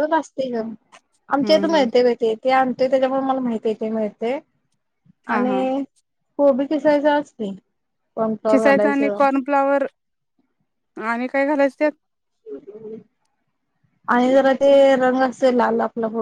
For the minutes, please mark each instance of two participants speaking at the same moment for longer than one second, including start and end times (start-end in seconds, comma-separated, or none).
none